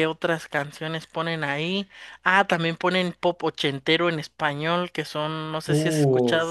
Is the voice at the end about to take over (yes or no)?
no